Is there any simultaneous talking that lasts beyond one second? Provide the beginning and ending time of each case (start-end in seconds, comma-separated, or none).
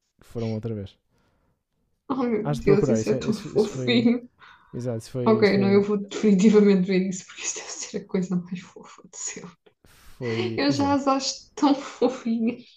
2.4-4.1